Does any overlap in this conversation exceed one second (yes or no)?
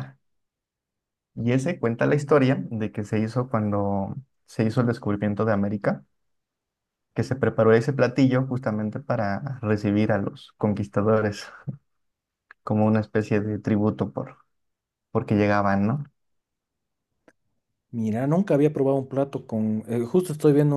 no